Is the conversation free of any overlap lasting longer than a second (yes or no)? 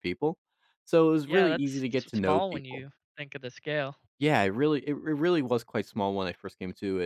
no